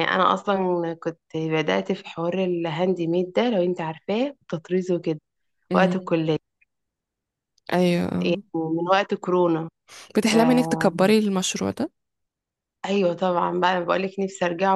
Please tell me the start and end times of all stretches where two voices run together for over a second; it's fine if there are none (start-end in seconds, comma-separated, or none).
none